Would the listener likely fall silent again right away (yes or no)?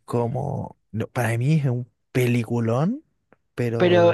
no